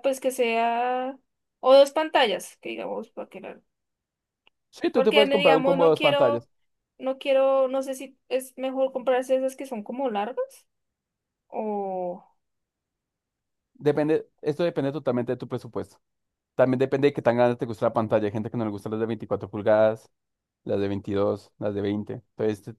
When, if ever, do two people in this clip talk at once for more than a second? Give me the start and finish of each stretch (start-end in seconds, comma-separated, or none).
4.9-6.5